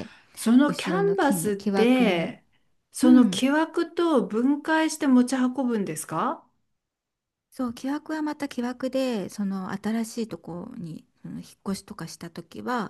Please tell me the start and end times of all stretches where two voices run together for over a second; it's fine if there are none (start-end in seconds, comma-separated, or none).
0.7-2.4